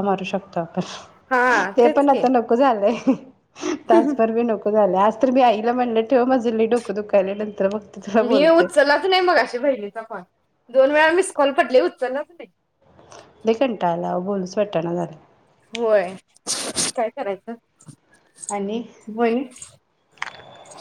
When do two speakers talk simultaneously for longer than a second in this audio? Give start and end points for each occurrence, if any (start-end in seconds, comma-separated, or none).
none